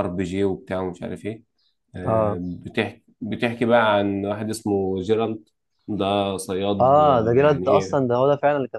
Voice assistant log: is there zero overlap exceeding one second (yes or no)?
no